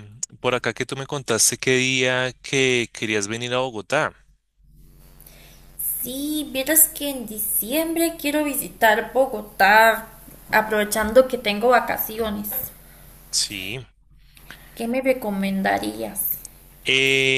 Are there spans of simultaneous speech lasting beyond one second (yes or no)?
no